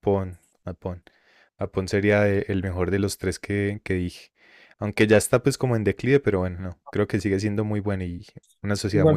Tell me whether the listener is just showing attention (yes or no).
no